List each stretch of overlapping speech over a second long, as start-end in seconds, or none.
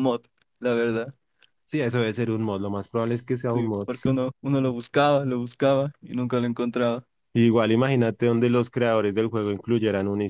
none